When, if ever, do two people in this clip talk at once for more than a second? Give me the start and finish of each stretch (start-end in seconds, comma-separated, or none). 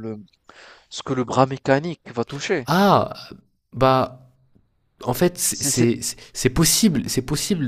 none